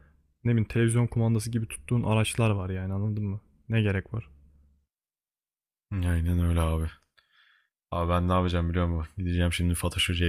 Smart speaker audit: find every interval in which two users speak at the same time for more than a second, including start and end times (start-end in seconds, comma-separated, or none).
none